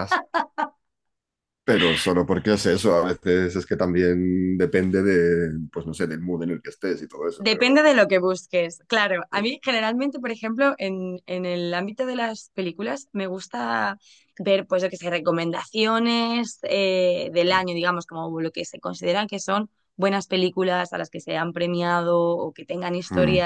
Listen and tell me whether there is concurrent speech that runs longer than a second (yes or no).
no